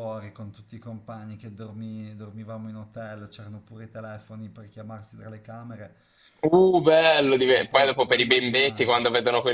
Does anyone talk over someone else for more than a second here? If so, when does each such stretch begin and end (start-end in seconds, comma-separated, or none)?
7.5-9.0